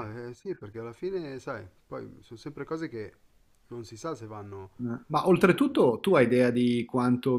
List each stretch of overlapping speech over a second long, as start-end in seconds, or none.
none